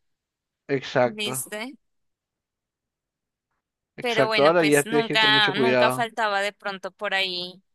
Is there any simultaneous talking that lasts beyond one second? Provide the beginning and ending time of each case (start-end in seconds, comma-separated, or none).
4.0-6.1